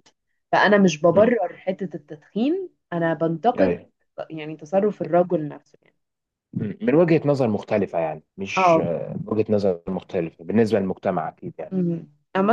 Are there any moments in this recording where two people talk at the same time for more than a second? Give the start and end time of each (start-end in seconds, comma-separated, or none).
none